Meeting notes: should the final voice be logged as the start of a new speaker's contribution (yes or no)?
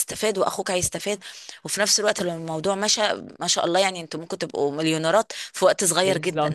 yes